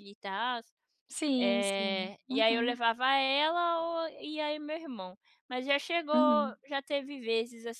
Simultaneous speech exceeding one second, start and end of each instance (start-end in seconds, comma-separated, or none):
1.4-2.8